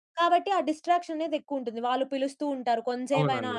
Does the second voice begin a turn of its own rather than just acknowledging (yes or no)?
no